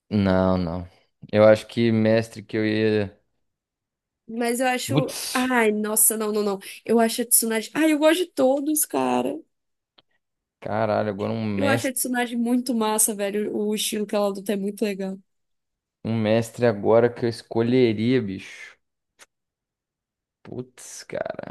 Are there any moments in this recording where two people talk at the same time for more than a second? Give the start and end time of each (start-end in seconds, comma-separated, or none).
none